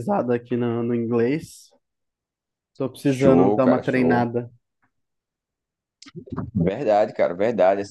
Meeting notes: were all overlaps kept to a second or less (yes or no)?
no